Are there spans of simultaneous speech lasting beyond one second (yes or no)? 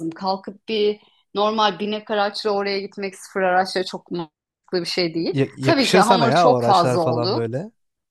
yes